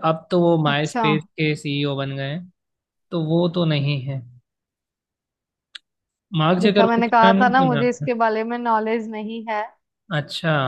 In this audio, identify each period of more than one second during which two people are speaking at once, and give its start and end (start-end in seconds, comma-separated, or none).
6.6-8.1